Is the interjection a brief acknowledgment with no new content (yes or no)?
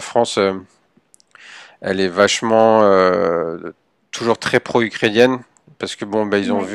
yes